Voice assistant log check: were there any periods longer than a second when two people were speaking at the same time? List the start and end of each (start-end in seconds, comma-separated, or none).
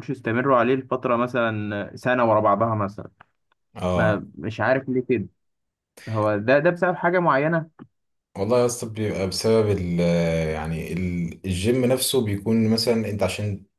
none